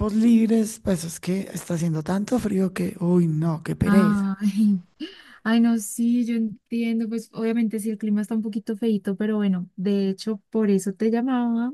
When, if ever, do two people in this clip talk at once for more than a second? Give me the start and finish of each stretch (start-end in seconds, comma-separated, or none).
none